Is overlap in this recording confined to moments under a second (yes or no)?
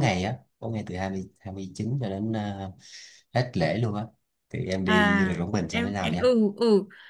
no